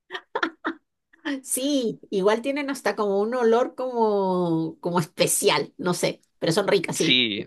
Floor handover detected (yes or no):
yes